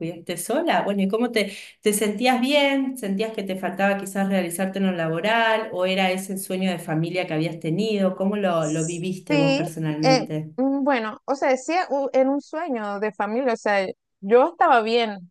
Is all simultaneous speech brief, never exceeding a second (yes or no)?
no